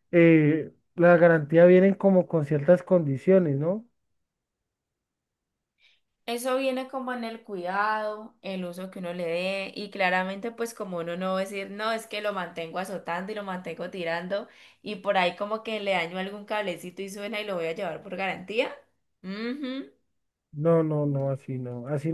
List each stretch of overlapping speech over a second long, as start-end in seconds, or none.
none